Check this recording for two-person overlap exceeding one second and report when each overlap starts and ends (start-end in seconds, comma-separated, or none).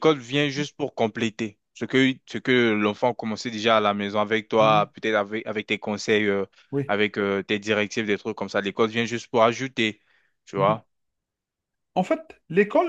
none